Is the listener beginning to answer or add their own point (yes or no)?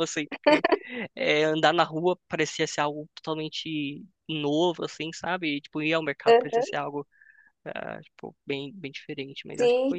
yes